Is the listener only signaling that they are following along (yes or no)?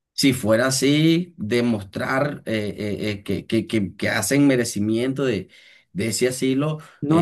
no